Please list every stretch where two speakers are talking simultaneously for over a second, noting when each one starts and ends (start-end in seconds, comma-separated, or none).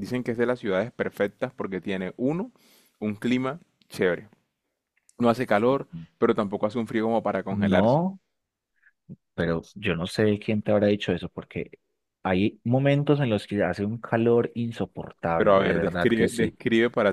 15.4-16.6